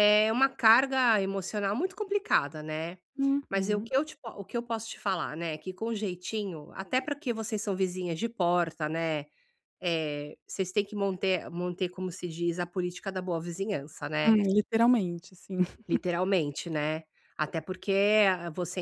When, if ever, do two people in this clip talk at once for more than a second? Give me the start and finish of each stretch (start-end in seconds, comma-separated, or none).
none